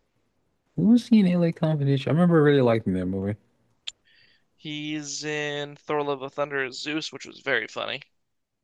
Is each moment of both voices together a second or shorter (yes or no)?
yes